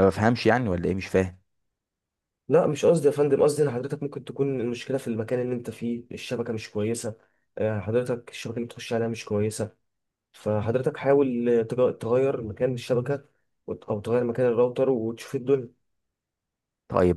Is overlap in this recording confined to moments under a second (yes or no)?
yes